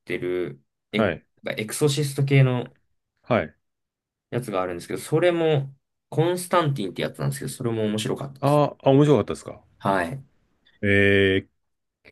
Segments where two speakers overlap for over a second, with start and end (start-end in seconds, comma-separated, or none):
none